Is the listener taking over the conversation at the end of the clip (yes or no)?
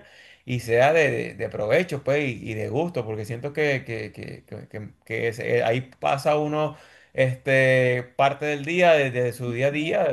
no